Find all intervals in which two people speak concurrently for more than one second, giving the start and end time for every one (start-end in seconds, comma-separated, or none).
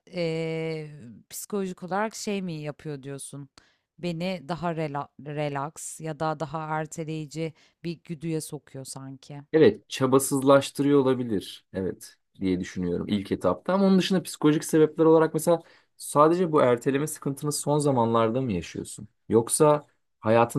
none